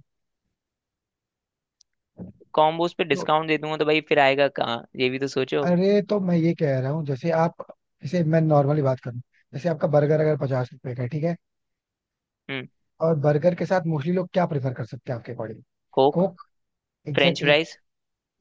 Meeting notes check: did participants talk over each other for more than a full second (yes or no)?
no